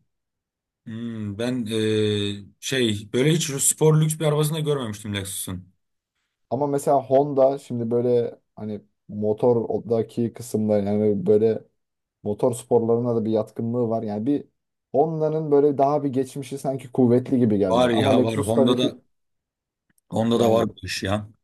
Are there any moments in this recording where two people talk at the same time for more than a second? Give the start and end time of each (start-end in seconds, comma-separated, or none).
17.7-19.0